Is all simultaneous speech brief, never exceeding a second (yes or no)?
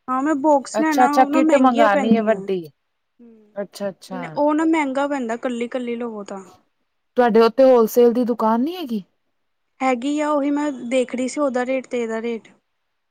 no